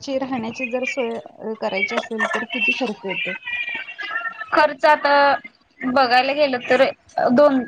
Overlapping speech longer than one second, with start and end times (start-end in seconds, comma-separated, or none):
none